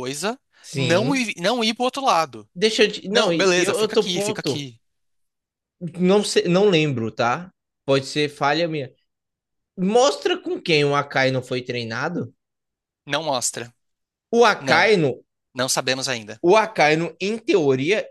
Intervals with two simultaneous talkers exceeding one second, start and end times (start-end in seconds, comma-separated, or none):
3.1-4.7